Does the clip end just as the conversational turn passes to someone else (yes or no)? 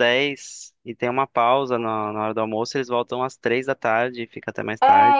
yes